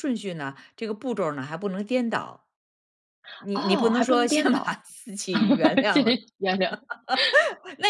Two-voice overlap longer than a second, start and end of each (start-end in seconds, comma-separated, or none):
3.5-4.8